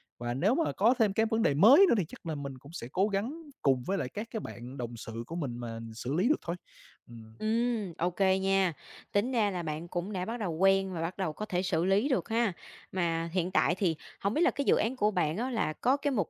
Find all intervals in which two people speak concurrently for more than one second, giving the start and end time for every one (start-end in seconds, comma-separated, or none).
none